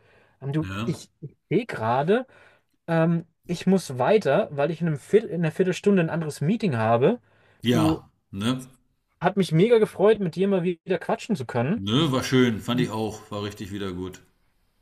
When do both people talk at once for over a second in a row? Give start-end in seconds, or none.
none